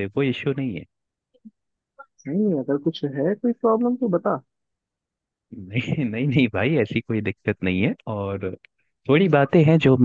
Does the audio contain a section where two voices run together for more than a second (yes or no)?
no